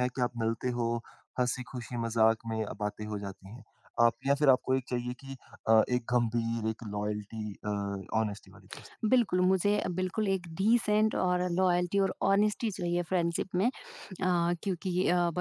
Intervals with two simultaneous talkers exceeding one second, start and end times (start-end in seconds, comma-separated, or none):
none